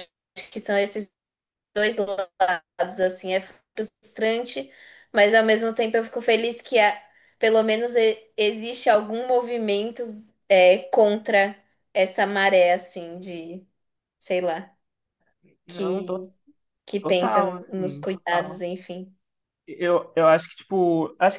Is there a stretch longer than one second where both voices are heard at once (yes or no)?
yes